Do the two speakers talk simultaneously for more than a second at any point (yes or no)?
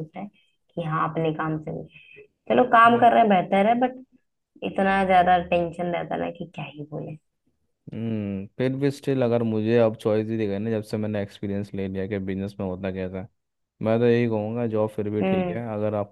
no